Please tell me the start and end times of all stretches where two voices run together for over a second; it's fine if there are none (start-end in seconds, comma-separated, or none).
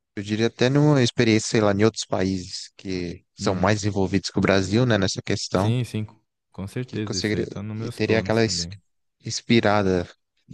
6.9-8.7